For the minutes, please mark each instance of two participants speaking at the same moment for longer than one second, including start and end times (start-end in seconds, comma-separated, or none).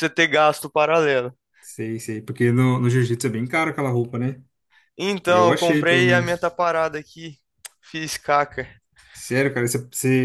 5.3-6.5